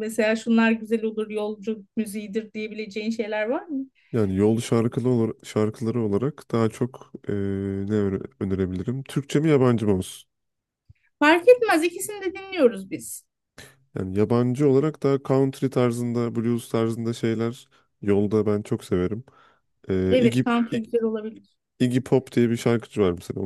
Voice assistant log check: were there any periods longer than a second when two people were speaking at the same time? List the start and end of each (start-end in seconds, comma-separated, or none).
none